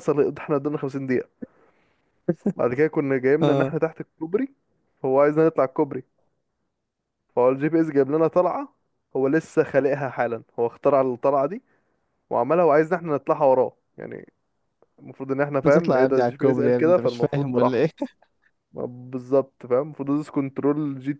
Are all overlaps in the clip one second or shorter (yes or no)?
no